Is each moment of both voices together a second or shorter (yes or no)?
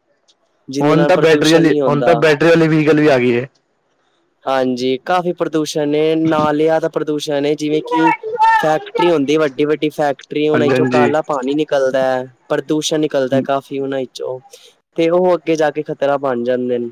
no